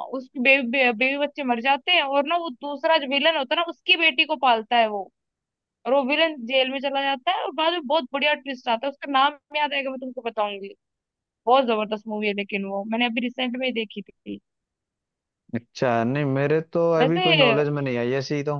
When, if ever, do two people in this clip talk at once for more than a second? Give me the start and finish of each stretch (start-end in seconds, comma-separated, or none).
none